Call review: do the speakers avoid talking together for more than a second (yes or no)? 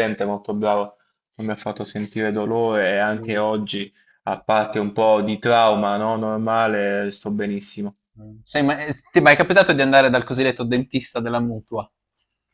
yes